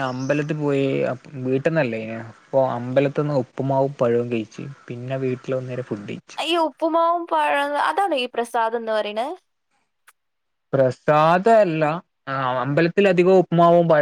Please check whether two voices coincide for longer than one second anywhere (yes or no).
no